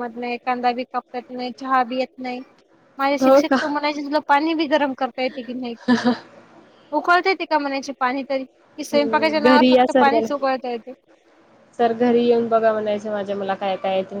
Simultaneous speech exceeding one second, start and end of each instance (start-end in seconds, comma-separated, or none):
8.9-10.5